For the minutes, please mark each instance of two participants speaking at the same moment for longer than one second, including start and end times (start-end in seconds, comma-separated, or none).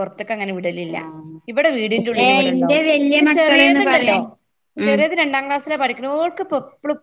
2.0-4.2